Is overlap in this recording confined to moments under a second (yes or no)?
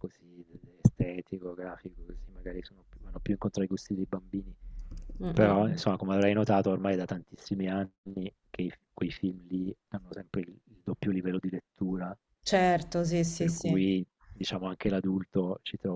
yes